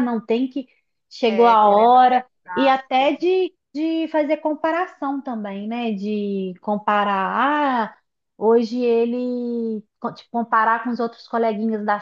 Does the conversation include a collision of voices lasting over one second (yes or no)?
yes